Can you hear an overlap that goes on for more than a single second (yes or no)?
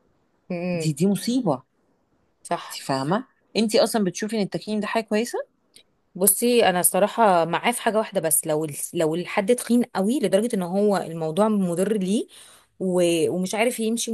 no